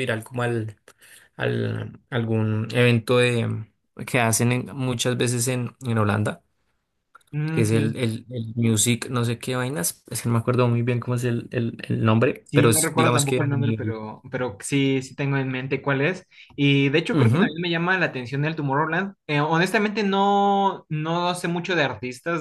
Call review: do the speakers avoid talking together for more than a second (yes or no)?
no